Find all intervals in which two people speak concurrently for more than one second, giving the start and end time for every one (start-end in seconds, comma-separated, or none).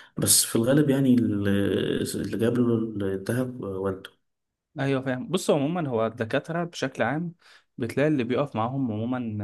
none